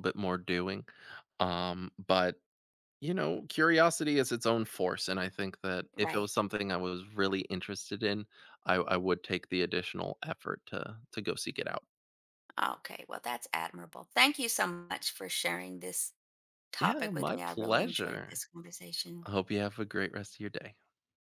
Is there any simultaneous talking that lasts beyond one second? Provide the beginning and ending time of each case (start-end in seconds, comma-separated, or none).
16.8-18.4